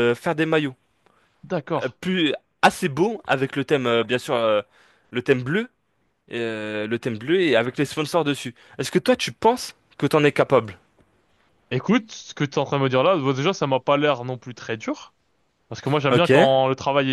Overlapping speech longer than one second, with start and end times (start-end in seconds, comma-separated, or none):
none